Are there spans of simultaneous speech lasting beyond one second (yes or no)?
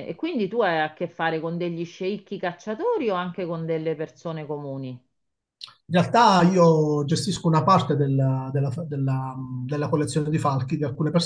no